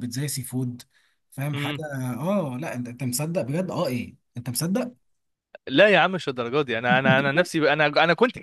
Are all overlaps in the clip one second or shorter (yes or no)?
yes